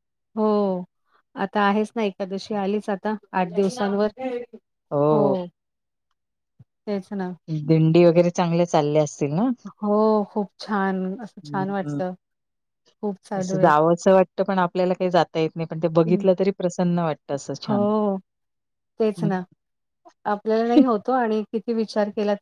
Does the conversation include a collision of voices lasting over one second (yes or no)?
no